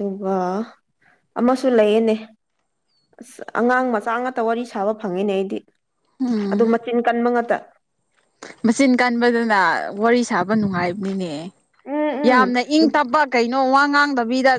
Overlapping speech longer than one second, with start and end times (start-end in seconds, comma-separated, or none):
none